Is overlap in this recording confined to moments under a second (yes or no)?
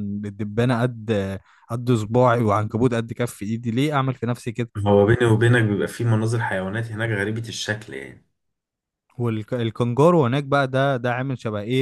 yes